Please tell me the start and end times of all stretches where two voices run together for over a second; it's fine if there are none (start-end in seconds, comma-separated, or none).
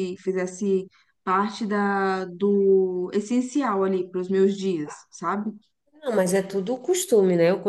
none